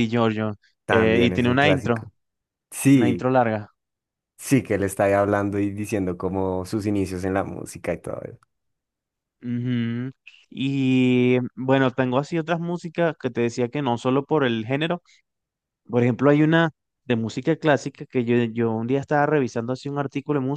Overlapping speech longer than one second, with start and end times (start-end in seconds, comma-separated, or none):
0.9-2.1